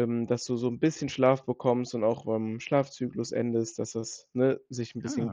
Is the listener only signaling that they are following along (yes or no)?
yes